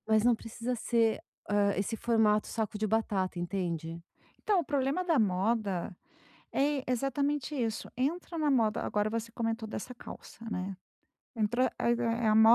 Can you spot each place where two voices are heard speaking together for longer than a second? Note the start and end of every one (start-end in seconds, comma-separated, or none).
none